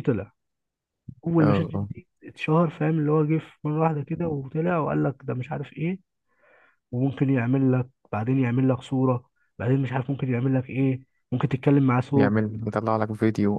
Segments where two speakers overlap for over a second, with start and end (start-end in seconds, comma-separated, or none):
none